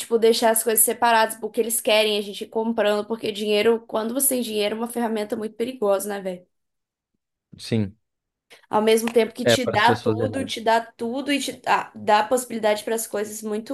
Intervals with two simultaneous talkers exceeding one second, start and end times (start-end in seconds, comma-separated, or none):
9.4-10.6